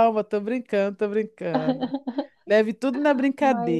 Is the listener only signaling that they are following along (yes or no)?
yes